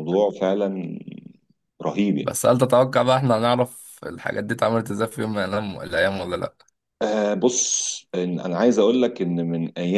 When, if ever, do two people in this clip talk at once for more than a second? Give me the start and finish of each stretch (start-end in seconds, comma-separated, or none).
none